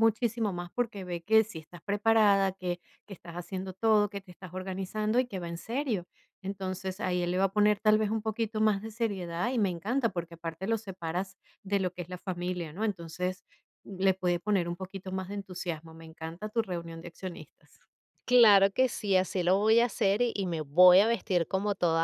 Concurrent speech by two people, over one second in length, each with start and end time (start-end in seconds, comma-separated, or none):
none